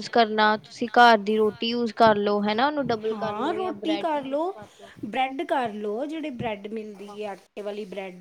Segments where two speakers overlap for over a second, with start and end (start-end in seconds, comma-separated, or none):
none